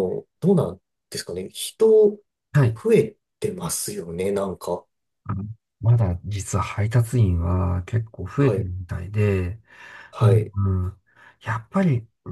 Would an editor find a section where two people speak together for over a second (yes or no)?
no